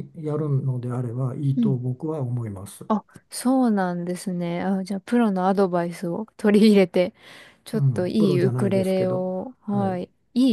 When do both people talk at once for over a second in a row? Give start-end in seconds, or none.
7.7-10.0